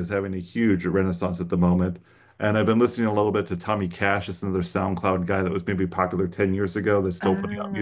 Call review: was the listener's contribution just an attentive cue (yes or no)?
no